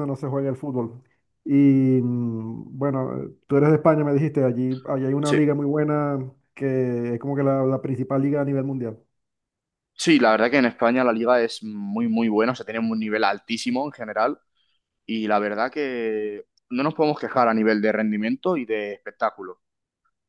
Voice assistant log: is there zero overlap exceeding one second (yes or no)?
yes